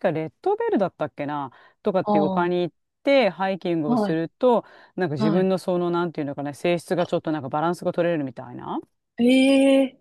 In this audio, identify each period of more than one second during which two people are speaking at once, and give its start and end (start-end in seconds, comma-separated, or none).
none